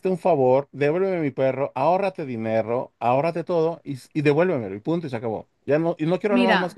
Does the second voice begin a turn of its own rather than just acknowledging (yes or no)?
yes